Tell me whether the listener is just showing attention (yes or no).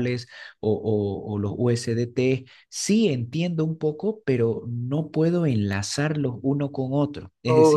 yes